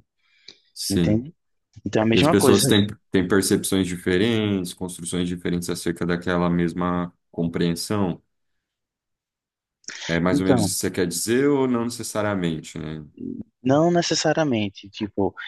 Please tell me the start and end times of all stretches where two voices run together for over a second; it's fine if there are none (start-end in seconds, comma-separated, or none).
none